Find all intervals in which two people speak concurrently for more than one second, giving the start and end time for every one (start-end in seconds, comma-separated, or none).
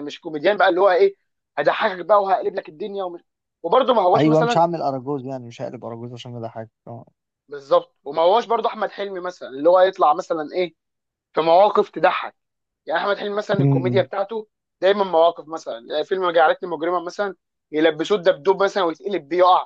none